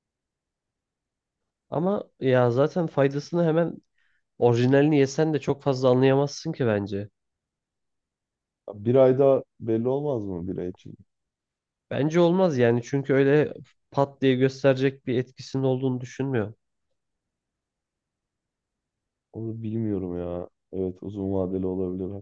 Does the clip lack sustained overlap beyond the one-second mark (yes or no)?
yes